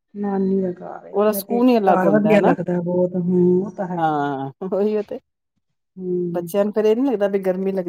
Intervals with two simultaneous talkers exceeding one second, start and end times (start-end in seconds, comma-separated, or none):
1.1-2.5